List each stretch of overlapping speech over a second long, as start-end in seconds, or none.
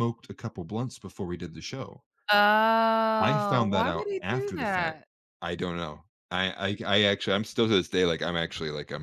3.2-5.0